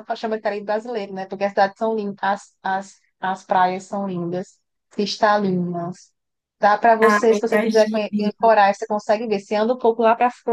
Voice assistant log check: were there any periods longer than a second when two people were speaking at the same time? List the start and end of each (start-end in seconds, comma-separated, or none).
7.0-8.5